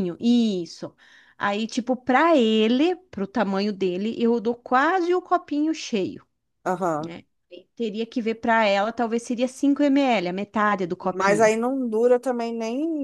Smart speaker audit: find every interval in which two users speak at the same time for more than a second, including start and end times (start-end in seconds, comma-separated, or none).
none